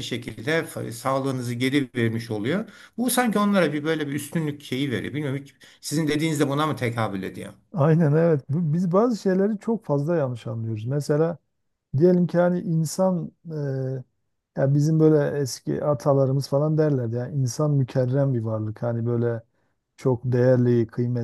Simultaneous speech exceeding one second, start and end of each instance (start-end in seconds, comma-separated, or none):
none